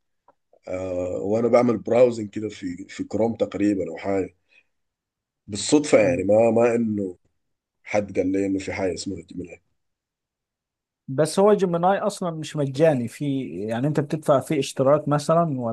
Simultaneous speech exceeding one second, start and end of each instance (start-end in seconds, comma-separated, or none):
none